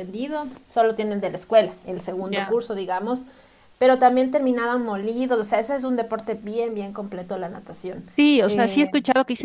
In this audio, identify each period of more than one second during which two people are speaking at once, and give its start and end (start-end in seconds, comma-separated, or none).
none